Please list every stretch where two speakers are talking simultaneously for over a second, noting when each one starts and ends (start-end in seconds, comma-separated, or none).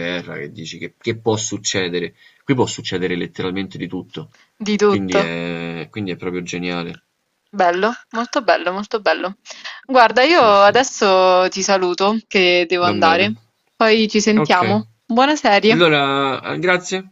none